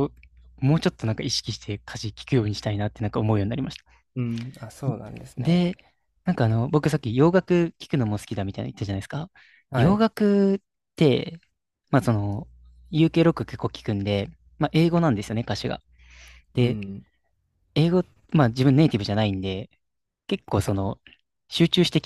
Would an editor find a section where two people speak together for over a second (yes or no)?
no